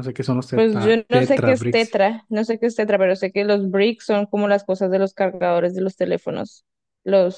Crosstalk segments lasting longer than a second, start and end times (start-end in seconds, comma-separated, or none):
0.5-2.0